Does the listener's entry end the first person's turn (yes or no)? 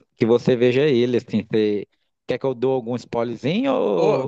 yes